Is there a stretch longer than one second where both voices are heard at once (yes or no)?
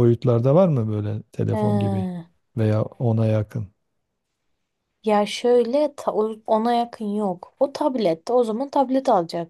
no